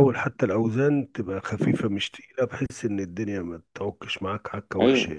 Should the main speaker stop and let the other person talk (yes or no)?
yes